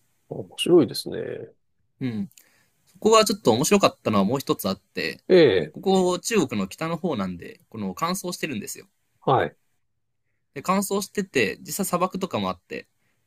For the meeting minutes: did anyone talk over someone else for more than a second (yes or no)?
no